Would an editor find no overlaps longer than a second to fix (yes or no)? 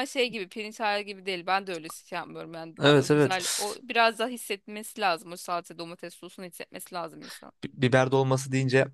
yes